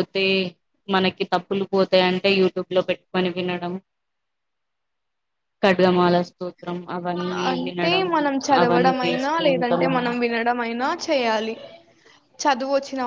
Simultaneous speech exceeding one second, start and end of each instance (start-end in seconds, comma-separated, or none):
8.6-10.2